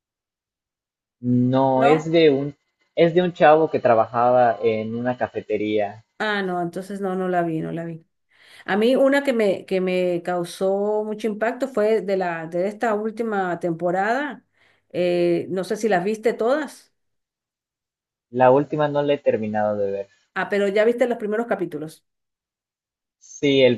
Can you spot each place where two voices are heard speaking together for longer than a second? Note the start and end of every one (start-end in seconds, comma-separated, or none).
none